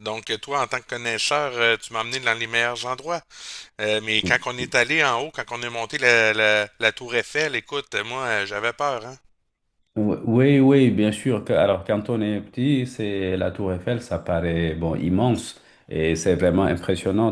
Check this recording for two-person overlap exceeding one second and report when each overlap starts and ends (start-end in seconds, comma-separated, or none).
none